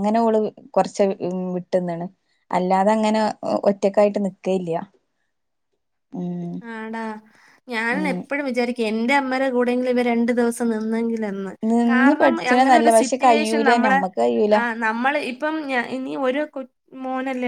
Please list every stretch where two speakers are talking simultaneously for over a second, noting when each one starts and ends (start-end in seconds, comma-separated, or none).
11.9-14.0